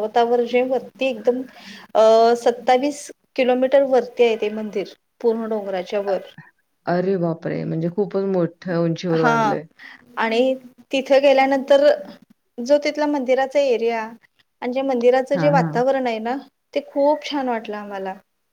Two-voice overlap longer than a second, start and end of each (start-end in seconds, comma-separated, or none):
none